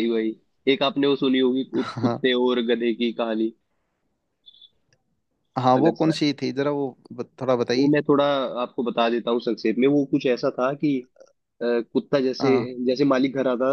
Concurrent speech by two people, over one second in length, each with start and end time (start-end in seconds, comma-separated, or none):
none